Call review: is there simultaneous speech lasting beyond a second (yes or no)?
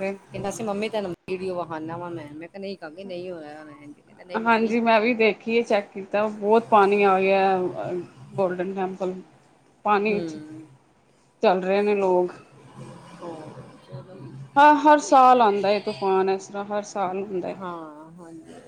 no